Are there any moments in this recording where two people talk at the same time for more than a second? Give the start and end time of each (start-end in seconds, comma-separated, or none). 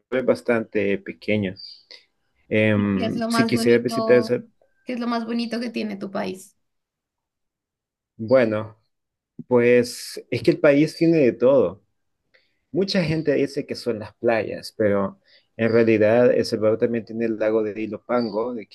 2.8-4.3